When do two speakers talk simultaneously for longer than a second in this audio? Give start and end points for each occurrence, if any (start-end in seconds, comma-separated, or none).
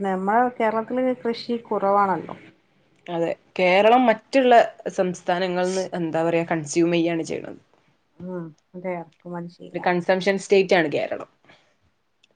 none